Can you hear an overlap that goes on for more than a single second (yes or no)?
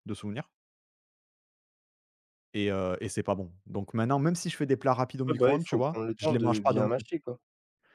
yes